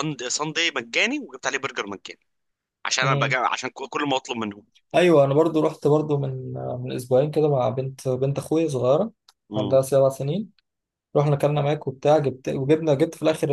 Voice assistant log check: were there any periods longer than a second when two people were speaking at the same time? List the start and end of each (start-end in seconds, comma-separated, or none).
none